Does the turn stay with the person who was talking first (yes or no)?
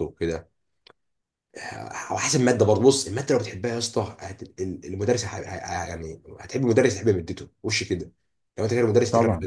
yes